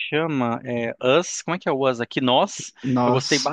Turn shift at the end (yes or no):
no